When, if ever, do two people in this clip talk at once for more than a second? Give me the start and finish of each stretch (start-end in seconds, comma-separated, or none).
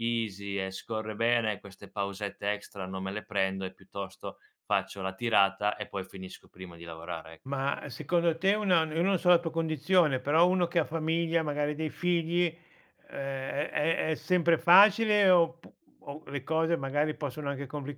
none